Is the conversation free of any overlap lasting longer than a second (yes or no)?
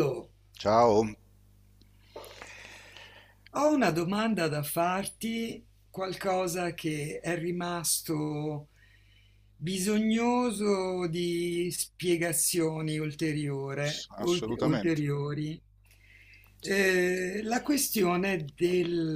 no